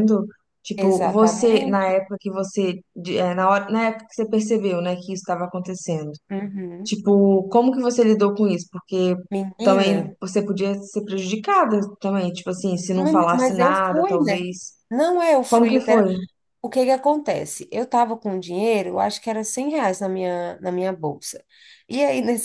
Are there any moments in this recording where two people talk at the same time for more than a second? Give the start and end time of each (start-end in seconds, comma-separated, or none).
0.8-2.0, 12.9-14.4